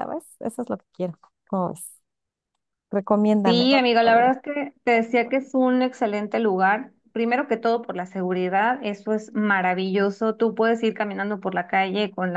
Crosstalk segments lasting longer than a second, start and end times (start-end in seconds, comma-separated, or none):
none